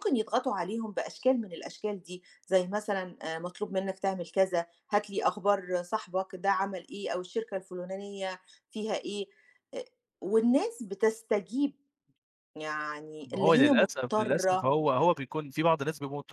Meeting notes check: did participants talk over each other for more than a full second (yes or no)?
yes